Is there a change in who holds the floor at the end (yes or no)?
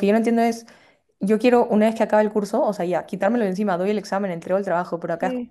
no